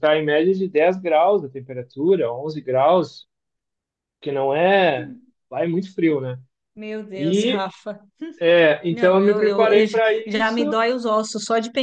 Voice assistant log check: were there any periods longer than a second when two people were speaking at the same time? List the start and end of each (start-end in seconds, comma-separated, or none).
8.9-10.6